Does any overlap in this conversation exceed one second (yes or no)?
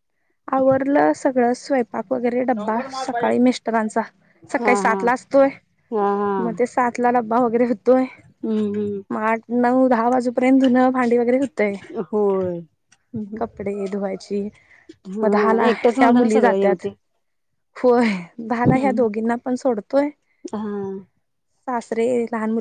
yes